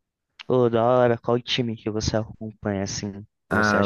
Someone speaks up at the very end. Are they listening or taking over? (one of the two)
taking over